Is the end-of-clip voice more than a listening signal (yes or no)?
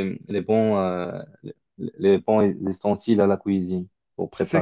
yes